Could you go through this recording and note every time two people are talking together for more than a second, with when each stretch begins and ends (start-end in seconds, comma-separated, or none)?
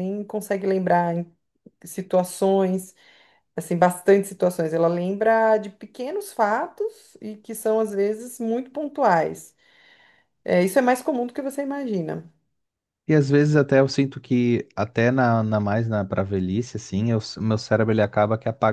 none